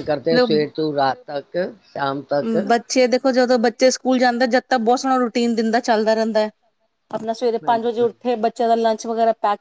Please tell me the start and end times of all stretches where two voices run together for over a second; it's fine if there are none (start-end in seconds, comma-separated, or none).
none